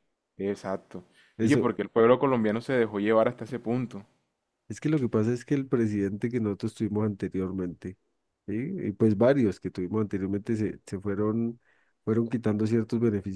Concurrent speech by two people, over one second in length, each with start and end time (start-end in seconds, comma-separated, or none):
none